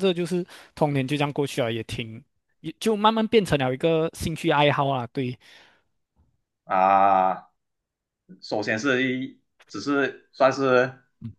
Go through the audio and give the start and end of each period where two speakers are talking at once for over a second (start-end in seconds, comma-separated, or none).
none